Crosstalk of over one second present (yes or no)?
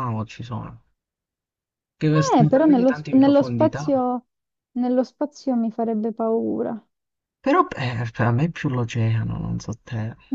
yes